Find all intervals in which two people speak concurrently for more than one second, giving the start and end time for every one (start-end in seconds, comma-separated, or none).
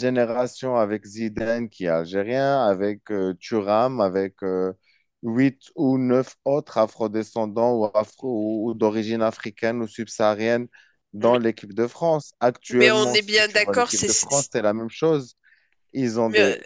12.8-14.1